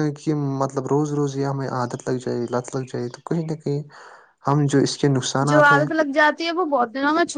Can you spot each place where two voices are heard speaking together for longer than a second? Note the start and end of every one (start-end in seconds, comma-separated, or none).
none